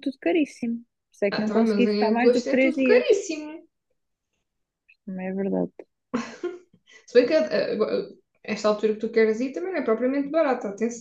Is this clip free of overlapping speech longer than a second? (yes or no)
no